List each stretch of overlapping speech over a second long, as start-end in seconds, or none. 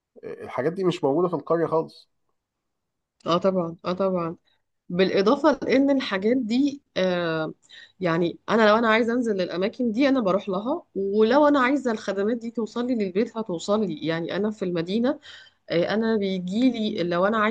none